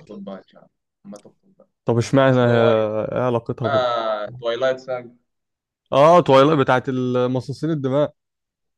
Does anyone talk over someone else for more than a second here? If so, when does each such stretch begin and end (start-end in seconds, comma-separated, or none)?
none